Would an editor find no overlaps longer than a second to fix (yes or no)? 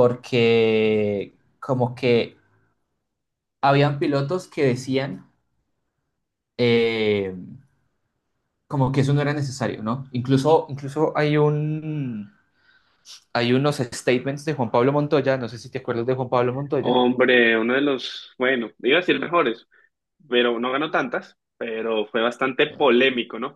yes